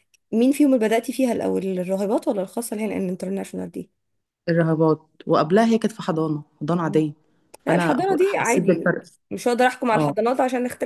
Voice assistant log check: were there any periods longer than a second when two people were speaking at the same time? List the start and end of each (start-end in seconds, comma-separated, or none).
7.7-9.0